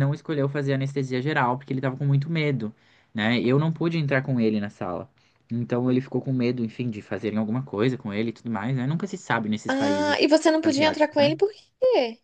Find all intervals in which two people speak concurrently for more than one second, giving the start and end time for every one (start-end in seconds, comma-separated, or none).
9.7-11.3